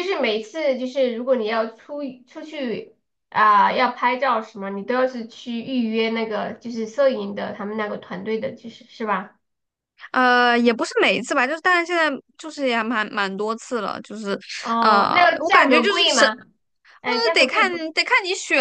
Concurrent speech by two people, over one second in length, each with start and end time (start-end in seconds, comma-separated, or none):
14.8-16.3